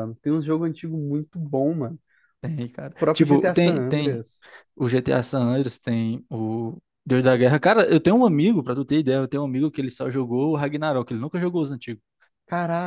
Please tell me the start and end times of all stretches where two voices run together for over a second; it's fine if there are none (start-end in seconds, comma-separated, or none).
2.8-4.2